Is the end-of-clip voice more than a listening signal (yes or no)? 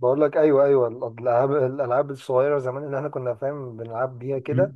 yes